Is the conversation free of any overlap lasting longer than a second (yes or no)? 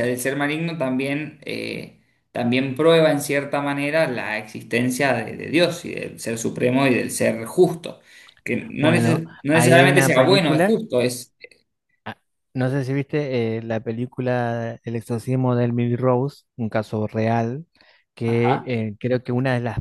no